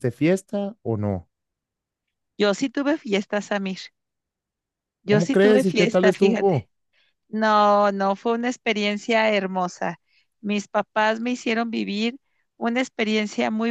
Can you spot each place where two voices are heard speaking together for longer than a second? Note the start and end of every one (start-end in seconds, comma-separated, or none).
5.1-6.7